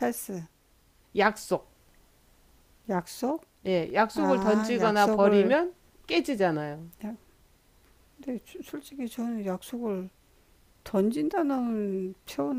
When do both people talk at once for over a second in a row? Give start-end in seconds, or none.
4.1-5.6